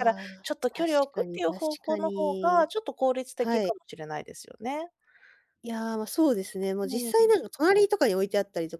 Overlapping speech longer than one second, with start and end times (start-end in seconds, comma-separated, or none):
0.7-2.7